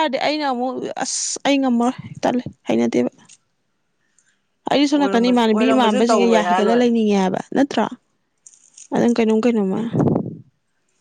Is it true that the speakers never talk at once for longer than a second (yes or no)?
no